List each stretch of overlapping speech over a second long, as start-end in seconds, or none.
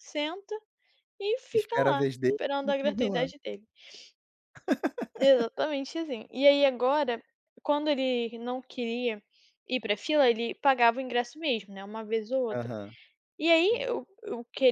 1.5-3.3